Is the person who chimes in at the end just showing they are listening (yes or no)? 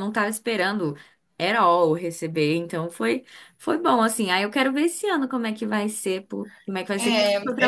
no